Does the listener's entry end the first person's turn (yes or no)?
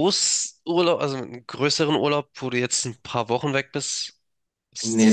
yes